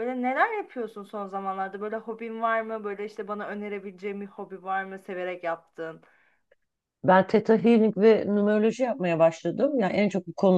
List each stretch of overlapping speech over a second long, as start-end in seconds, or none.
none